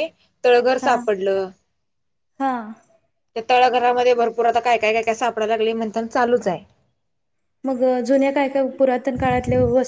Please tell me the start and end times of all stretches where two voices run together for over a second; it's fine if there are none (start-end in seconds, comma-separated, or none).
none